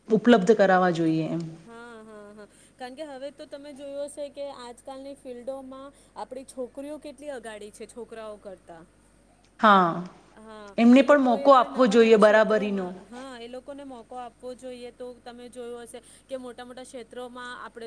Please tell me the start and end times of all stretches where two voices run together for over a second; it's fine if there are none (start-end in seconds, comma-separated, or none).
10.8-12.8